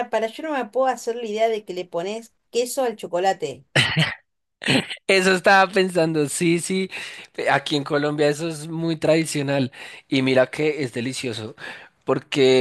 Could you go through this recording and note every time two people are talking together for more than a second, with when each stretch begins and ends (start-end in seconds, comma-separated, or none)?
none